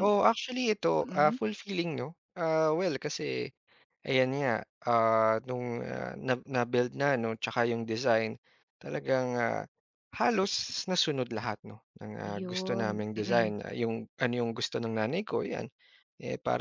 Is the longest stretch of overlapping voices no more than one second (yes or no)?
no